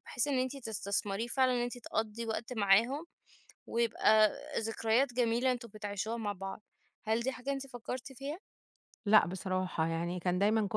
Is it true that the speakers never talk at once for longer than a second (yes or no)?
yes